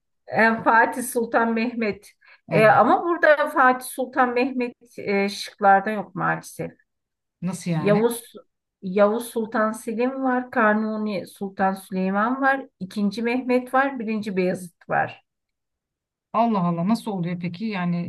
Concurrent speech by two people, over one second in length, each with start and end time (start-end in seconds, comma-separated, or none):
none